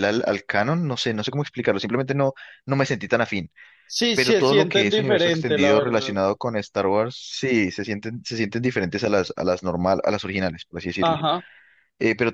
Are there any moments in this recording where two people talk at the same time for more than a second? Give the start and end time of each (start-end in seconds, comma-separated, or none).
4.1-6.2